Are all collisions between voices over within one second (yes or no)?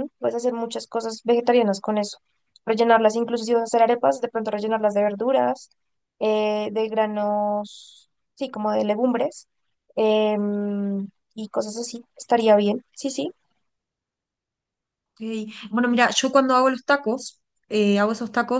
yes